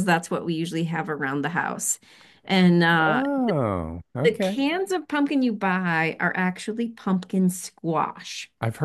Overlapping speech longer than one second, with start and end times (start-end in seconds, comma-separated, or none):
none